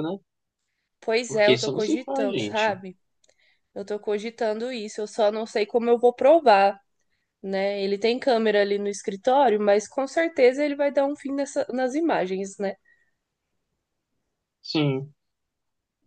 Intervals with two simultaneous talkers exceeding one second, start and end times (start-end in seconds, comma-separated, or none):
1.3-2.8